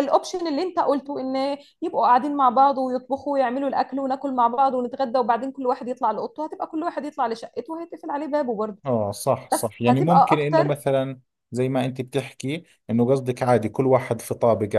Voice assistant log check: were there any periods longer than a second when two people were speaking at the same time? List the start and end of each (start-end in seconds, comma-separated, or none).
9.5-10.8